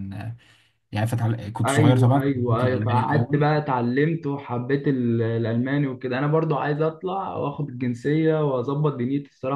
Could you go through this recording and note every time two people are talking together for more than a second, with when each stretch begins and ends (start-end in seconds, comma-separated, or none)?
1.6-3.4